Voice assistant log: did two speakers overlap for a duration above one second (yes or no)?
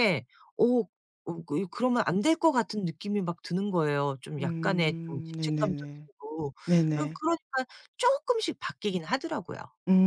yes